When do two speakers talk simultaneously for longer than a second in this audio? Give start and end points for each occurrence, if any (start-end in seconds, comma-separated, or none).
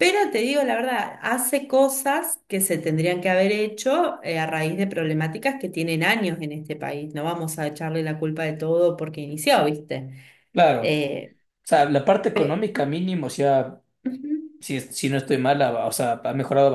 none